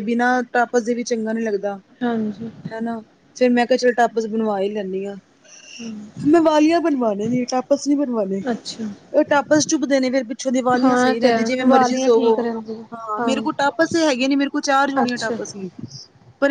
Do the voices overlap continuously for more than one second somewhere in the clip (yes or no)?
yes